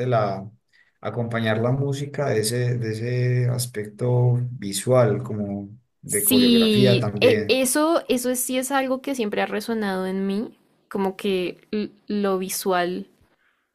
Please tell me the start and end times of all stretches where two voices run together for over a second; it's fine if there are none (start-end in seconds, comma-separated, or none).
6.0-7.6